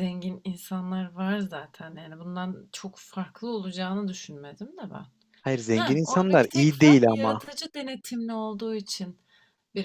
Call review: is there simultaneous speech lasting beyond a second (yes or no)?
yes